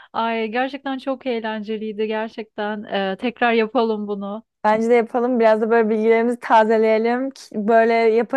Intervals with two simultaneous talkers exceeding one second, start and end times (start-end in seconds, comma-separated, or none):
none